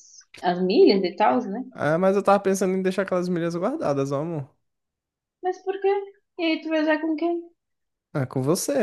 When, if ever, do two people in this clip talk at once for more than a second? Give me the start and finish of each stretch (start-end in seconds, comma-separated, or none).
none